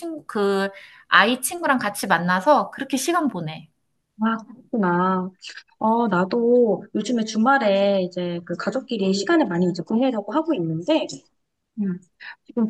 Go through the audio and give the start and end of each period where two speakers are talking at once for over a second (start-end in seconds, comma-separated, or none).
none